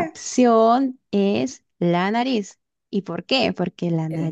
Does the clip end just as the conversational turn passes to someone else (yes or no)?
no